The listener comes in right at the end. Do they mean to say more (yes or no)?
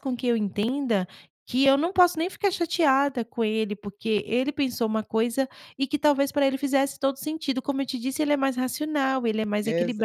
yes